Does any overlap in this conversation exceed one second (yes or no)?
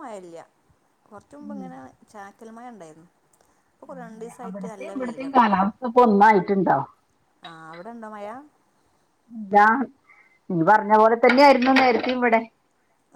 yes